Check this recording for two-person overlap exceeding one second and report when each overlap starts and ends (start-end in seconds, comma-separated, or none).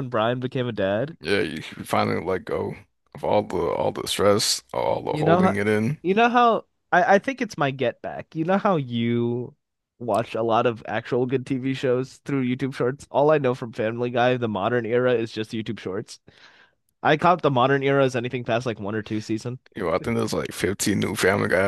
none